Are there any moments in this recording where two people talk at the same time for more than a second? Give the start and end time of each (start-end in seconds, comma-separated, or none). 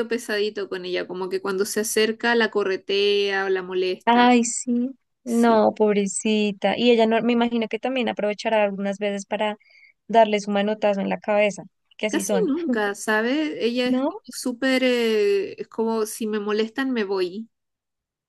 none